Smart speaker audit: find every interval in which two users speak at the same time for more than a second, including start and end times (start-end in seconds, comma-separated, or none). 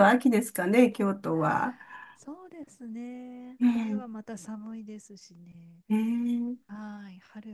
none